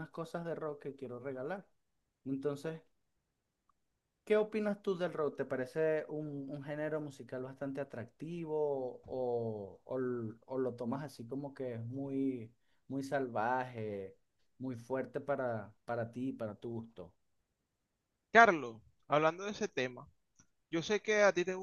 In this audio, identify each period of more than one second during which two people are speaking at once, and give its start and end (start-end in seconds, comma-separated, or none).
none